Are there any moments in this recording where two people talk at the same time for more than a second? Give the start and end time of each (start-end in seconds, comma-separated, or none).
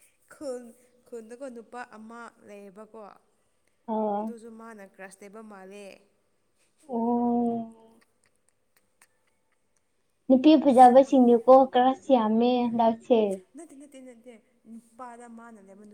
none